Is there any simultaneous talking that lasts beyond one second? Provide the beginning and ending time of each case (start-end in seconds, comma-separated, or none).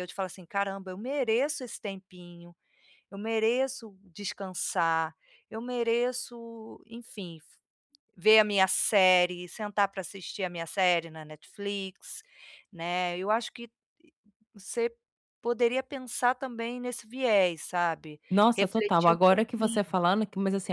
18.3-20.0